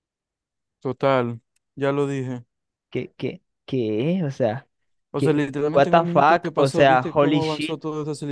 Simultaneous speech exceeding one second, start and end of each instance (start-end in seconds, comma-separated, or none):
5.2-7.8